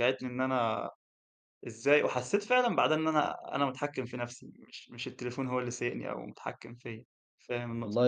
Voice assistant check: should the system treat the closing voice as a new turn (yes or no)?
yes